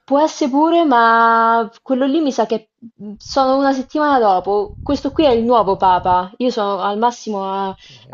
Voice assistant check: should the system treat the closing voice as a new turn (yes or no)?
no